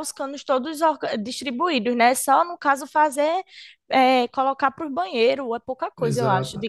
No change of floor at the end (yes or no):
no